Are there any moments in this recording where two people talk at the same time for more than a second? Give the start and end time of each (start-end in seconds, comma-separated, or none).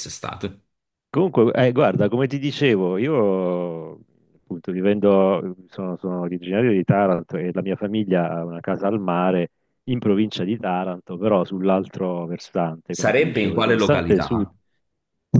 12.9-14.5